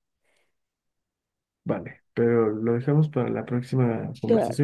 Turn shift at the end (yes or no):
no